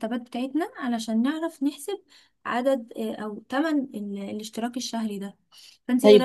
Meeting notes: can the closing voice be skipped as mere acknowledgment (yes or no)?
yes